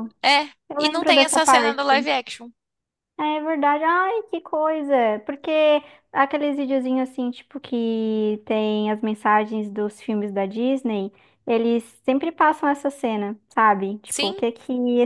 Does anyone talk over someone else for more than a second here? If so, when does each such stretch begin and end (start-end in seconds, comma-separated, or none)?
0.7-2.1